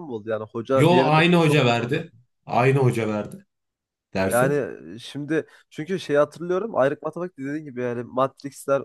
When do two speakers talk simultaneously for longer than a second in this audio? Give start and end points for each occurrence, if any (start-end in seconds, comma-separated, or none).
0.7-2.1